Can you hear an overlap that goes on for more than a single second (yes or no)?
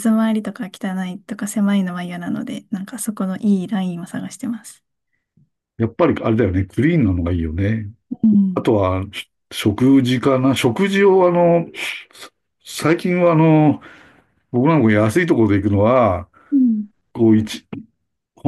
no